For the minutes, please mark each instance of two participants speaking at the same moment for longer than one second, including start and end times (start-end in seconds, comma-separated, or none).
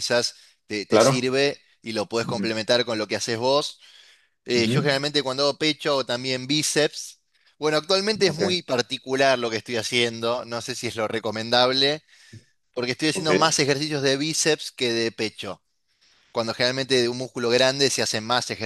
none